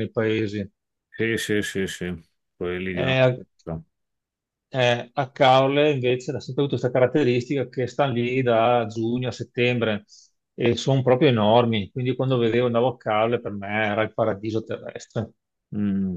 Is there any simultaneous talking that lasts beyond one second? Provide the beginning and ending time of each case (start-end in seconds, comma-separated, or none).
none